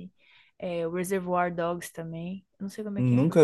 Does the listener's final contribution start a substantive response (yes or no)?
yes